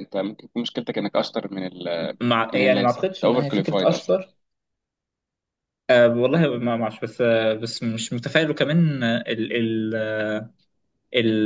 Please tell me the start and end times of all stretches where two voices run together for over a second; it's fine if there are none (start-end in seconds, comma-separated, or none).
2.5-4.1